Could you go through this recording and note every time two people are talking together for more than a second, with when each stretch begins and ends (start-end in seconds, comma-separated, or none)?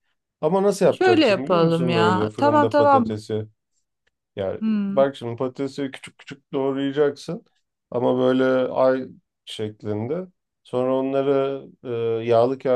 0.9-3.2